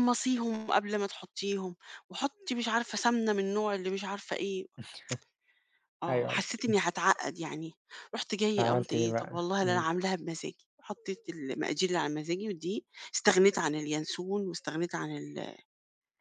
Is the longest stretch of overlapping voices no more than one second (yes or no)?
no